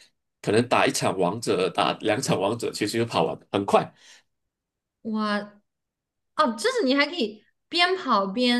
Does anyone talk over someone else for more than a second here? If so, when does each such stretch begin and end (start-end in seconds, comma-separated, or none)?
none